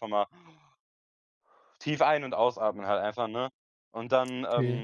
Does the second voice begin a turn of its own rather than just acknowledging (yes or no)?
no